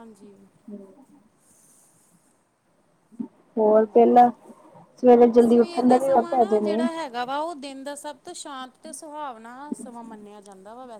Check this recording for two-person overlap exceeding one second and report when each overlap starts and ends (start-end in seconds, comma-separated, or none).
5.4-6.8